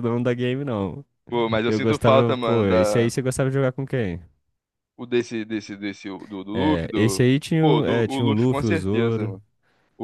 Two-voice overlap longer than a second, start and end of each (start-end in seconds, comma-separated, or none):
1.6-3.1, 6.5-9.3